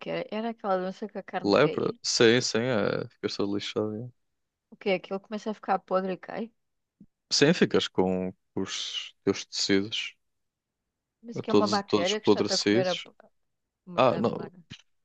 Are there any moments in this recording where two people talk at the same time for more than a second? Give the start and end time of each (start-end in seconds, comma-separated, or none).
11.5-13.0